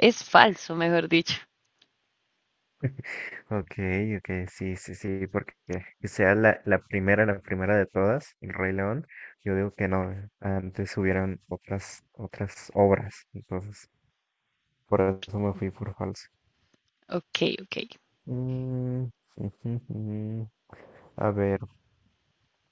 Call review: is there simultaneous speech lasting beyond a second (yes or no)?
no